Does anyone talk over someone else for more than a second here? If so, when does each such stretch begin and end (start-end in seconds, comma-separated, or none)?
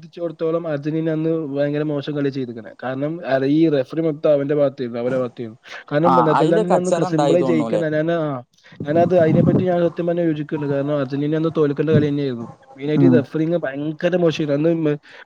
6.1-7.8